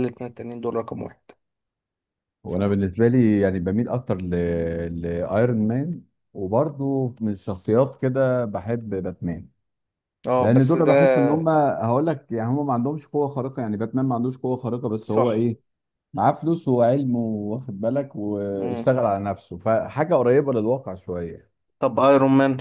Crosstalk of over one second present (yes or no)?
no